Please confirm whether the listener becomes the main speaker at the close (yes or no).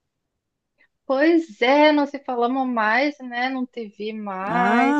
yes